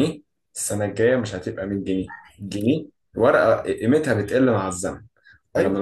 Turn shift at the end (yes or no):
no